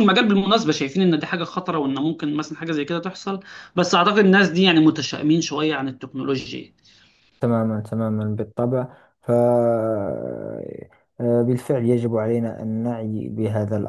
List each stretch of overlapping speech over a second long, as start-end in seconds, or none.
none